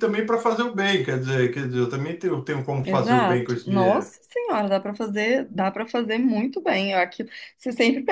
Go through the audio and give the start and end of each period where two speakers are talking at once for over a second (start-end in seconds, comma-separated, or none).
2.8-4.1